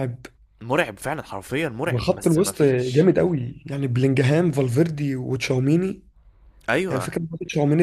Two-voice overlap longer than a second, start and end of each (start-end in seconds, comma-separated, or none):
1.9-3.1